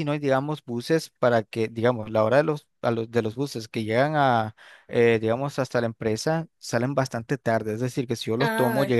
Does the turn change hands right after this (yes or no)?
no